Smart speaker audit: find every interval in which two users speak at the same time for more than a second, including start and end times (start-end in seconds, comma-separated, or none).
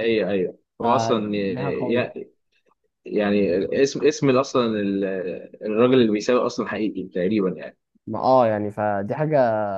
0.8-2.1